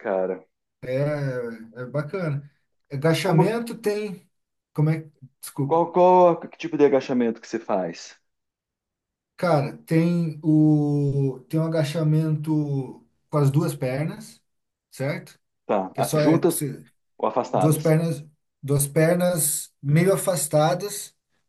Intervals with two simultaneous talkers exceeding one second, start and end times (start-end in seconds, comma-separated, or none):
none